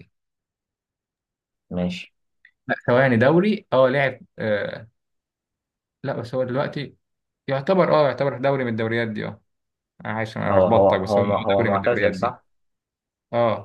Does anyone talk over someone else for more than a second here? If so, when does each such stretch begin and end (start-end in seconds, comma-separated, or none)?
10.5-12.4